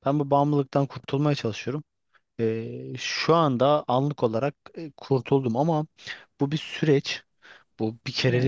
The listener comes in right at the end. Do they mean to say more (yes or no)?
no